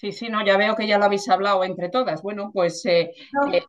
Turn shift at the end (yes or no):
no